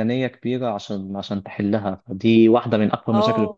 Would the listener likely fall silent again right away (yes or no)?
yes